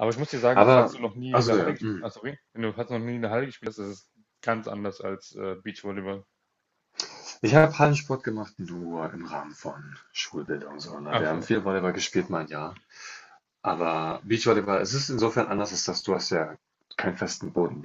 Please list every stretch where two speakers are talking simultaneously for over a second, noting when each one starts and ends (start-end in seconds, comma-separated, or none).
0.5-2.1